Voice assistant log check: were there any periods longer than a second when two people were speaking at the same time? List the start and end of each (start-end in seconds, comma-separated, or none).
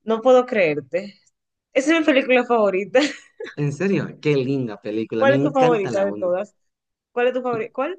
5.2-6.4